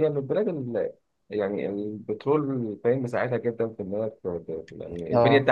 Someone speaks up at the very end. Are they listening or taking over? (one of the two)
listening